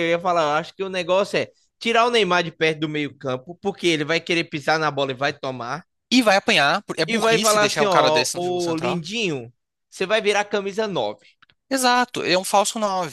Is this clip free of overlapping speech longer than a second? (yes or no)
no